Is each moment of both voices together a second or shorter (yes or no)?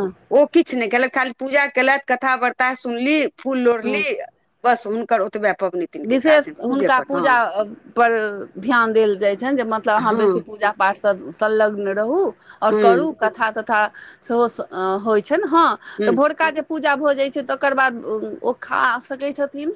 yes